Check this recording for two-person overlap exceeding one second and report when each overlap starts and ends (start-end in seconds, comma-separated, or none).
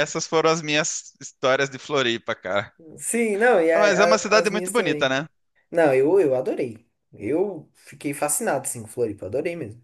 3.8-5.2